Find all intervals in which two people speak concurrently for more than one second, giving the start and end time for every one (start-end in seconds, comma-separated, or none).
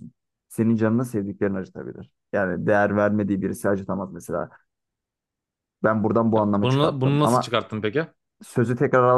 6.3-7.6